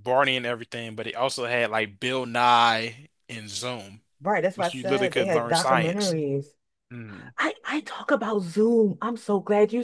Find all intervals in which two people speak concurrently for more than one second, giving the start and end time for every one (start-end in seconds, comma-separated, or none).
4.5-6.2